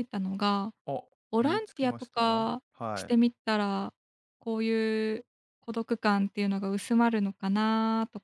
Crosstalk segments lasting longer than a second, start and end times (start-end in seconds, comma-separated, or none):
1.4-3.2